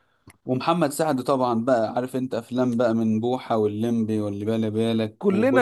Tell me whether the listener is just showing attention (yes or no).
no